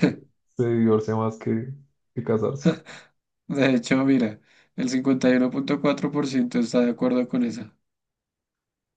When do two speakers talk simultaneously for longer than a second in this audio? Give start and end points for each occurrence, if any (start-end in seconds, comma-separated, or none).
none